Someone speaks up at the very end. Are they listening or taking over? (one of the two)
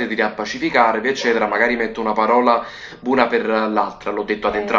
taking over